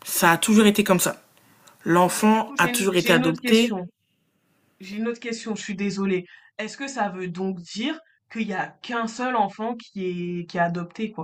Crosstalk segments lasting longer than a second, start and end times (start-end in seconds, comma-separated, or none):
2.1-3.8